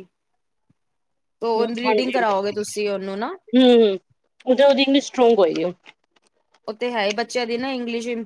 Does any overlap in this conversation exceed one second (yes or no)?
no